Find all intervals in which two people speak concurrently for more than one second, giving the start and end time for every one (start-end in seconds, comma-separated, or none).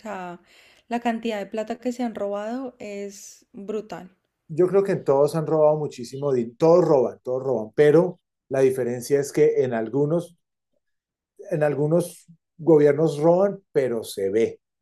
none